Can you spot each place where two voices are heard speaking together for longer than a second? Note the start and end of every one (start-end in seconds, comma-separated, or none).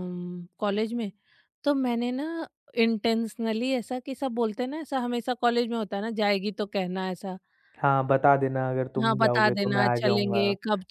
9.0-10.4